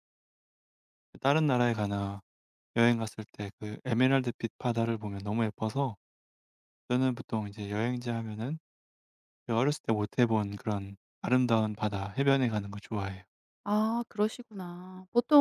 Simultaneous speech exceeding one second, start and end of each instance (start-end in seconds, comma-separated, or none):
none